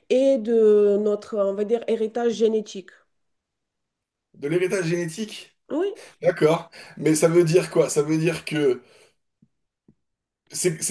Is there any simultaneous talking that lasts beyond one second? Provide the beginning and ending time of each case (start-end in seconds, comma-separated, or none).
none